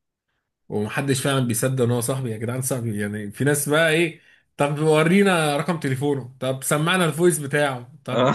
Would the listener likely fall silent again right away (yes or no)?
yes